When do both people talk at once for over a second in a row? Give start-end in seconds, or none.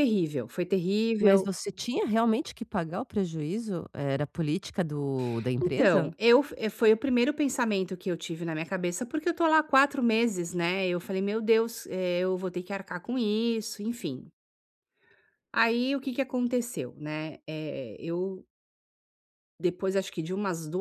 none